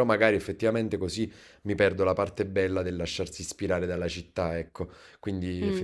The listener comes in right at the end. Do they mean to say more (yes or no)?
no